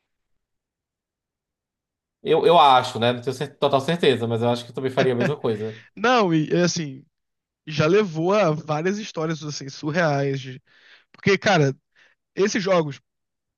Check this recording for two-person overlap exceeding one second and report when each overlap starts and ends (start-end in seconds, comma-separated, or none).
none